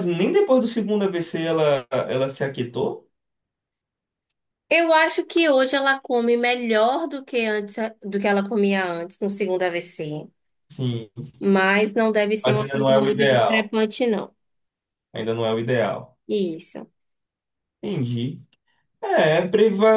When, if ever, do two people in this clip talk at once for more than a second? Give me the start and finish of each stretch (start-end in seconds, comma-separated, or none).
12.4-13.7